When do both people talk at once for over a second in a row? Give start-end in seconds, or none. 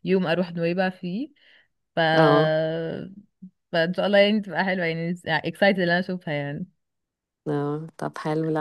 none